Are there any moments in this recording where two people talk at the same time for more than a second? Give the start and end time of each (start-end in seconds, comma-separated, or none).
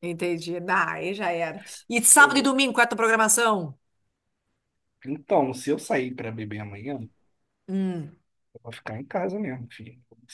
none